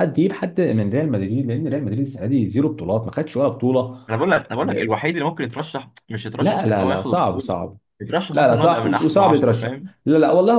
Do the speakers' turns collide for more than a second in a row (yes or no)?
yes